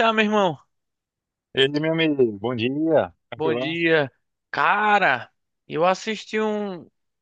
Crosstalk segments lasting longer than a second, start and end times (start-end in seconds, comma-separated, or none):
none